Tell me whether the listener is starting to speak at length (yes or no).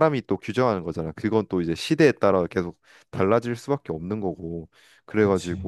no